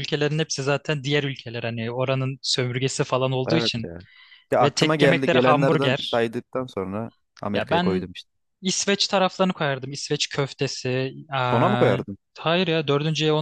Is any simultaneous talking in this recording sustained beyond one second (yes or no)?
yes